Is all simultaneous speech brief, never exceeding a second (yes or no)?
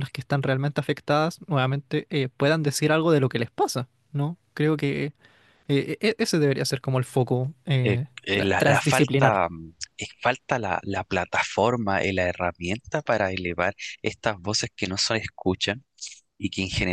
no